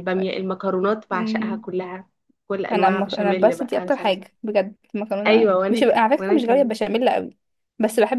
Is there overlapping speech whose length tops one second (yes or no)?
yes